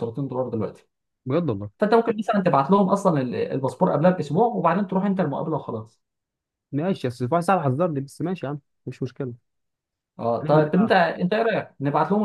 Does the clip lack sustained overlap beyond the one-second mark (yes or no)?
yes